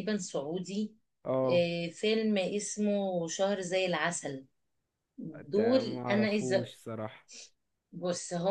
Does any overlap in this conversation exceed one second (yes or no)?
yes